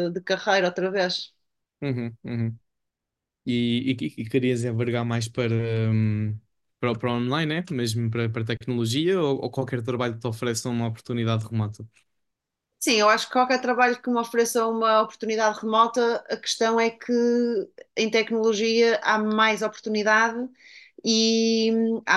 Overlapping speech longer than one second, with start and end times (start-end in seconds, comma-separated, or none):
none